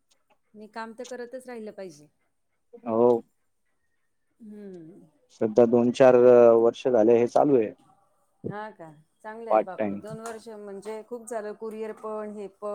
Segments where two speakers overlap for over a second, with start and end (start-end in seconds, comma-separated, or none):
none